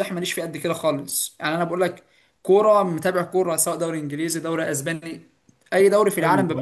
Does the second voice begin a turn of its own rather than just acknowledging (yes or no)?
yes